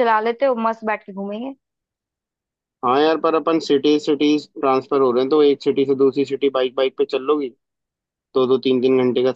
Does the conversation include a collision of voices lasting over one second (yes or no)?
no